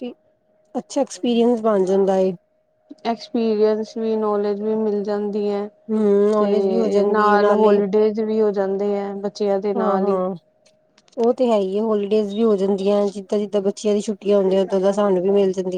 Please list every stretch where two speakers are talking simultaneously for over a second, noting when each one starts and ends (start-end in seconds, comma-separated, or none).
6.4-7.8